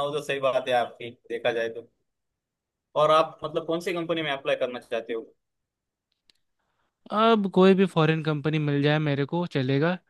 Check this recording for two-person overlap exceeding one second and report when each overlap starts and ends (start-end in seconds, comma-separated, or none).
none